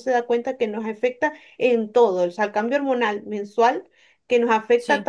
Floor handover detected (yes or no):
no